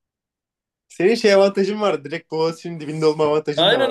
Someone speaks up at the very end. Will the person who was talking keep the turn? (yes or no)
no